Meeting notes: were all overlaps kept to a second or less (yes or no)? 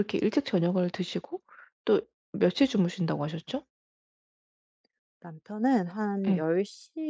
yes